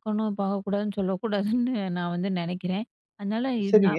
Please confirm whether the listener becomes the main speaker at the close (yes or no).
yes